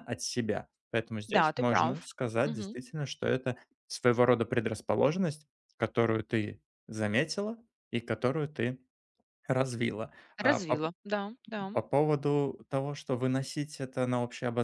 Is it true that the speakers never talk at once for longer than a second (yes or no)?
no